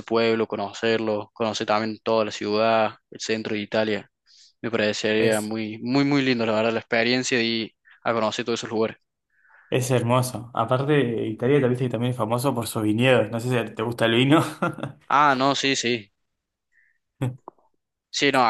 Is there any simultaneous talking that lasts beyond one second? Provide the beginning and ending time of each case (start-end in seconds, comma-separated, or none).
none